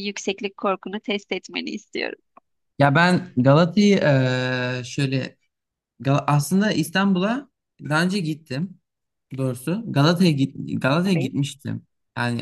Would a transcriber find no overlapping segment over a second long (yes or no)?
yes